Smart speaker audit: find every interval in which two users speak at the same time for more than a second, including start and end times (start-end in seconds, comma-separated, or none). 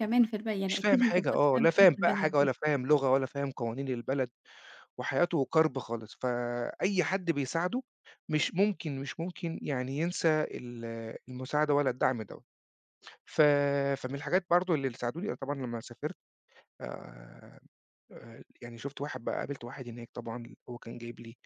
0.7-2.5